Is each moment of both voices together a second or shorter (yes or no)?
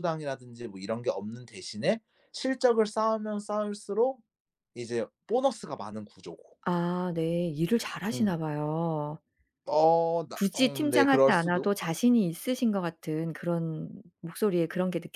no